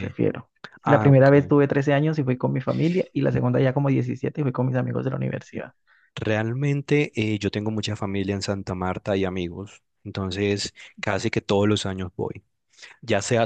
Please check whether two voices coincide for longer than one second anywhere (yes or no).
no